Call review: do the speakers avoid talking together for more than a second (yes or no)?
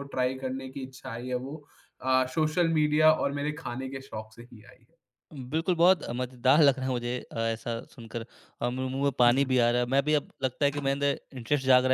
yes